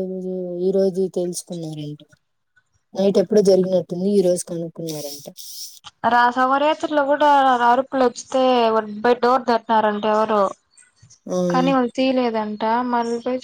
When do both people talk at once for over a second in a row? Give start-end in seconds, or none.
none